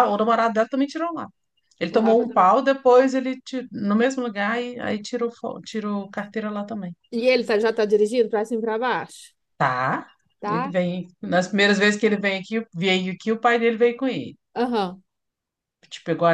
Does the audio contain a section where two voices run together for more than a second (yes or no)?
no